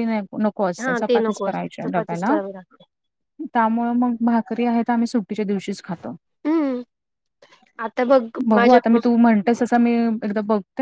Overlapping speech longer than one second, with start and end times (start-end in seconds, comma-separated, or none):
0.9-2.3